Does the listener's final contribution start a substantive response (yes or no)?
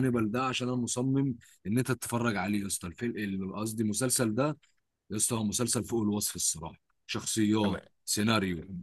no